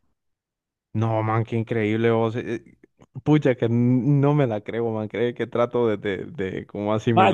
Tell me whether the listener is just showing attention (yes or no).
no